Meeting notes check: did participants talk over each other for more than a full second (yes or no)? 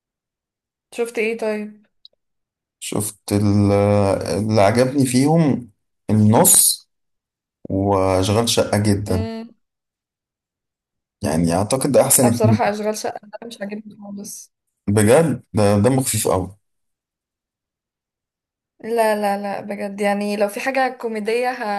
no